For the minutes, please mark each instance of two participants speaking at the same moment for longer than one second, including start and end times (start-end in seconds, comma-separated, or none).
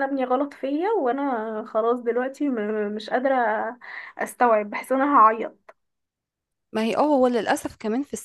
none